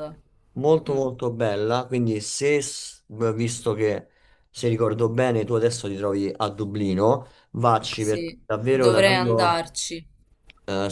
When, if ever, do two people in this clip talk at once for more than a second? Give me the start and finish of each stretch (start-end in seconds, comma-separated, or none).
7.9-9.6